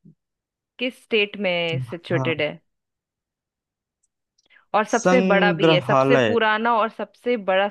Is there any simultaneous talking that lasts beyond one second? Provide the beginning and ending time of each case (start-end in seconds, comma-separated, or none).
4.9-6.4